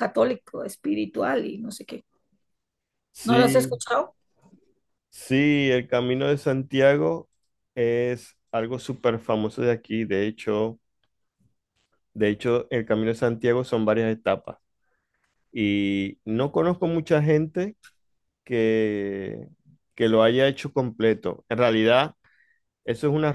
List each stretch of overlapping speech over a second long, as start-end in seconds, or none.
none